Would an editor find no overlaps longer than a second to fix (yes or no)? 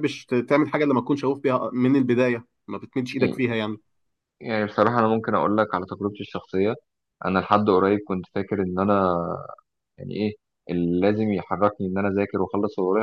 yes